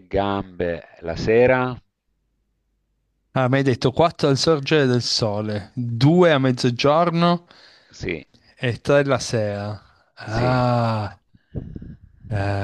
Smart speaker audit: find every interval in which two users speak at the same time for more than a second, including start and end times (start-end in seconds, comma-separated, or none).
none